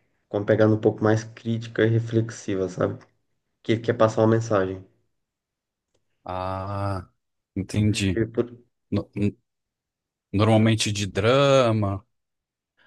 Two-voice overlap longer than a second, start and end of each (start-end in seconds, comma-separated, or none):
none